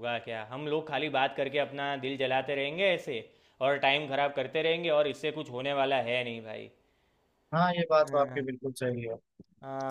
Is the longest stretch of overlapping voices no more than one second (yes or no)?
yes